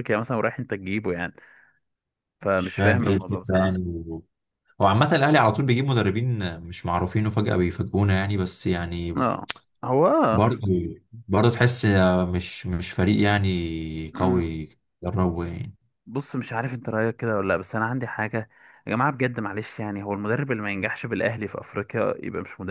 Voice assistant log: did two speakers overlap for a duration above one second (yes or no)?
yes